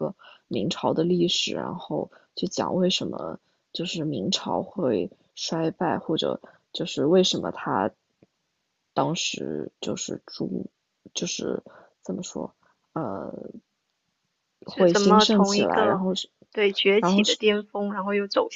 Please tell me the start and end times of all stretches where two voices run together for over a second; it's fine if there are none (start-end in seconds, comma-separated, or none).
14.7-16.0